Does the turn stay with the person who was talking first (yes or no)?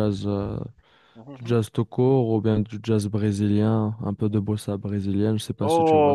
no